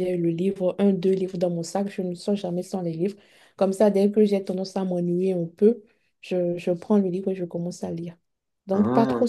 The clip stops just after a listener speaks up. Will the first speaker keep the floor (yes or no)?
yes